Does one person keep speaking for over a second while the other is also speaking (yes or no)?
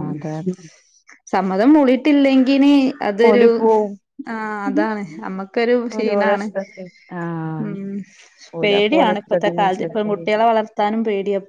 yes